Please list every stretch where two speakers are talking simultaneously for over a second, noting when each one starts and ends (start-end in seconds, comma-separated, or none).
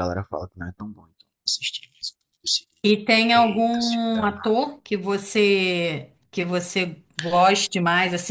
3.3-4.6